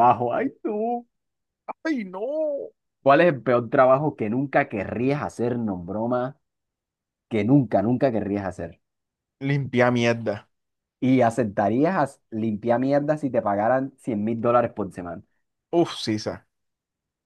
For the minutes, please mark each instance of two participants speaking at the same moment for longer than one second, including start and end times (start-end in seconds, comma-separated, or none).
none